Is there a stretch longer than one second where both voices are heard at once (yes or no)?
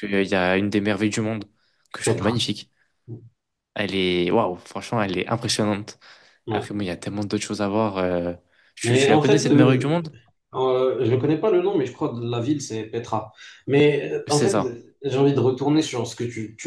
yes